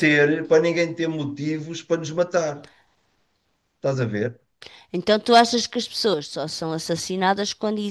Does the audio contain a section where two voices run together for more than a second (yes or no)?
no